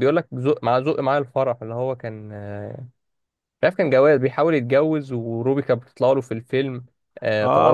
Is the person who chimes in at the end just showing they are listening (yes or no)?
no